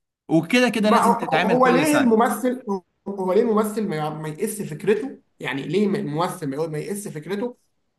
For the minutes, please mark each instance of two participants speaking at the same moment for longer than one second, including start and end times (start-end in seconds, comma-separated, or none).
0.8-2.1